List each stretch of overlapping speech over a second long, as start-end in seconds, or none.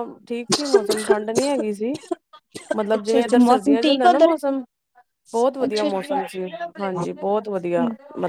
3.0-4.3